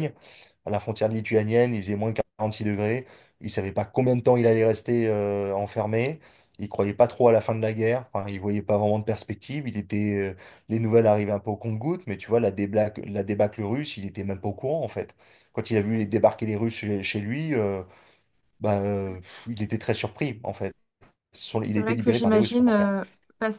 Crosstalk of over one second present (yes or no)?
yes